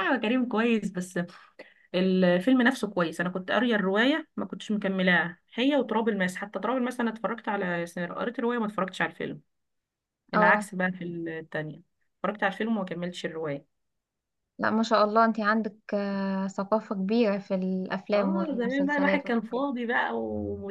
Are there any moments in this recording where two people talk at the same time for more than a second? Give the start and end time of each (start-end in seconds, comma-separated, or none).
18.1-19.6